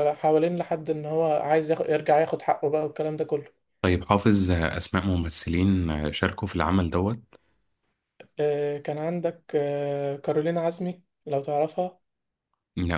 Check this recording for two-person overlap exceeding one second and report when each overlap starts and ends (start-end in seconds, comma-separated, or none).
none